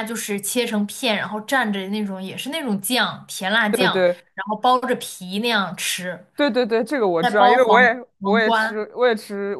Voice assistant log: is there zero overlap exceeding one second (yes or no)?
no